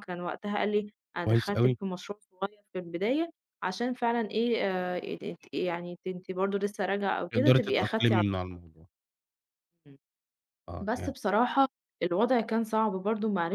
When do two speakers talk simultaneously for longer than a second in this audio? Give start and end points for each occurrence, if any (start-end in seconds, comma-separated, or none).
7.3-8.6